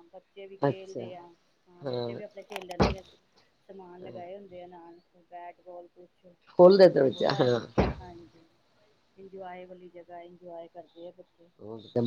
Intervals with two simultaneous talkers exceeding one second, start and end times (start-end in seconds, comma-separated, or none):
none